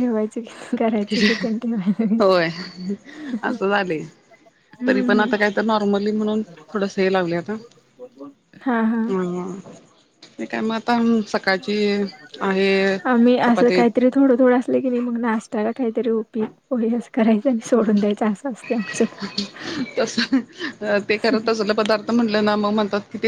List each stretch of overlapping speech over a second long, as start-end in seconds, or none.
none